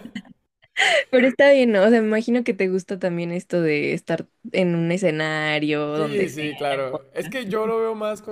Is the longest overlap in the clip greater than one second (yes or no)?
yes